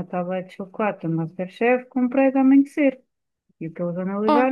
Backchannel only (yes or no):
yes